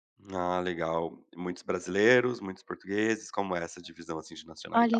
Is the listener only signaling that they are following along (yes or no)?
no